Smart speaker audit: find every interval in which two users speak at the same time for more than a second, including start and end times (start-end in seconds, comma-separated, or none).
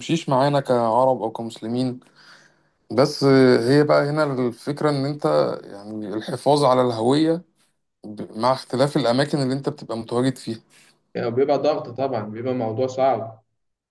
none